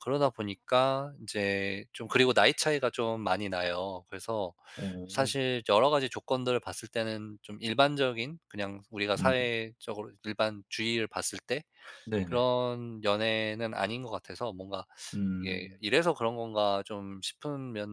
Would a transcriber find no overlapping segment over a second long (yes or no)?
yes